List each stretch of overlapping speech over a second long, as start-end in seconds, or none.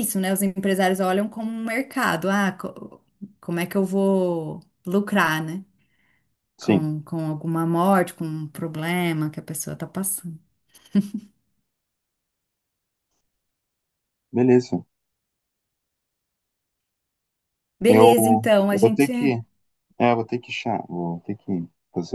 17.9-19.1